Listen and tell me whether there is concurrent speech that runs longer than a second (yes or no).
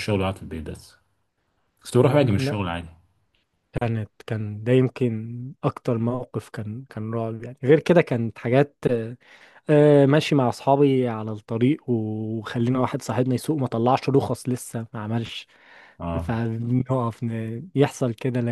no